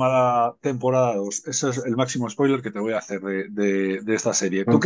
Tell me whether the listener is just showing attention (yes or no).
no